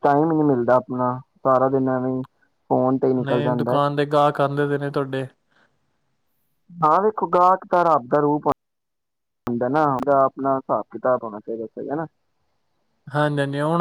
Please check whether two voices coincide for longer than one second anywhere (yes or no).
no